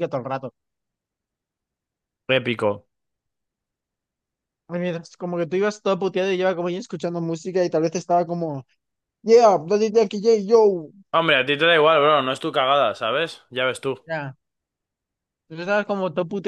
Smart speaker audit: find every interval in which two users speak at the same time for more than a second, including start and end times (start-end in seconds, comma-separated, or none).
none